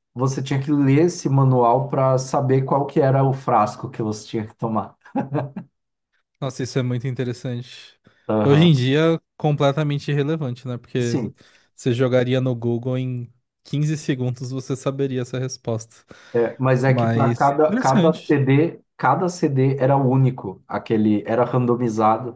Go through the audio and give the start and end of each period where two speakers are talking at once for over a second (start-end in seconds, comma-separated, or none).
16.9-18.4